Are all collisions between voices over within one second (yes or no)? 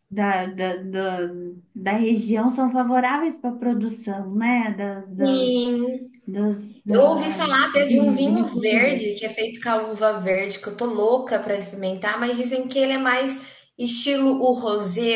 no